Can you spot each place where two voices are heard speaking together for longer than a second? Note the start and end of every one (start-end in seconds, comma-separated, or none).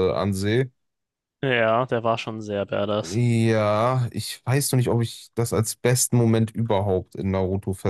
none